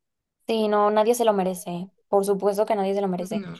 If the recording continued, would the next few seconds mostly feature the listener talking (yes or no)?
no